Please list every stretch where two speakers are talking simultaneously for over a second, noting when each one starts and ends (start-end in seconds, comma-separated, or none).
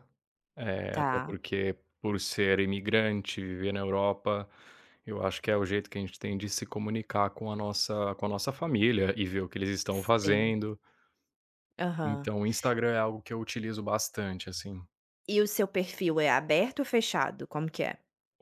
none